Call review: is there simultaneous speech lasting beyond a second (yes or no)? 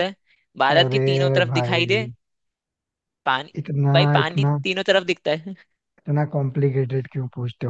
yes